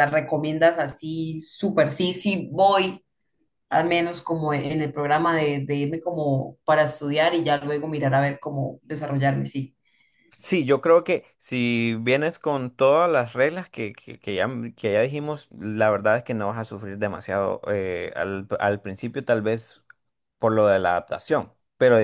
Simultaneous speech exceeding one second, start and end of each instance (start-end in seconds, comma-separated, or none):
none